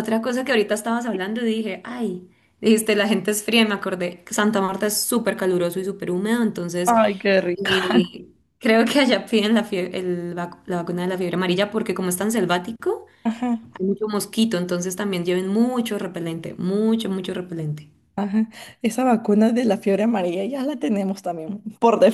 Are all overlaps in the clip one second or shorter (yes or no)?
yes